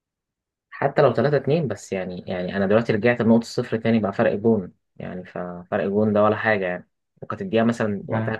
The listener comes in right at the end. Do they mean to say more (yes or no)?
no